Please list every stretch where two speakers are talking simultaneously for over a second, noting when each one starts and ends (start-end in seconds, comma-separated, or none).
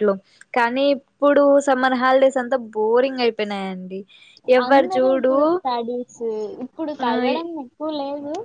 none